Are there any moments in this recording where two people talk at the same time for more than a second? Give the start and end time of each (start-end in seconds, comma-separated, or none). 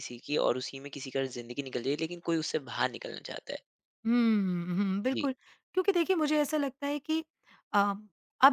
none